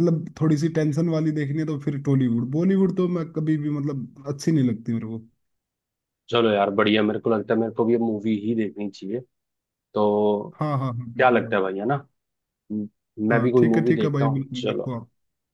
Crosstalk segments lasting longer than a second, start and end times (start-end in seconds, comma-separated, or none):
13.3-14.9